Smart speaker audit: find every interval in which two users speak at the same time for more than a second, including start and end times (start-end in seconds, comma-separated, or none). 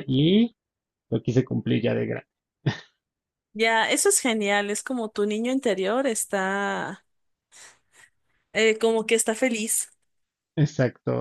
none